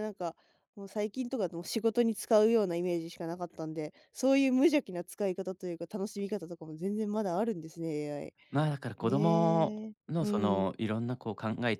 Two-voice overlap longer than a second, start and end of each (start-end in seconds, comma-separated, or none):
9.1-10.7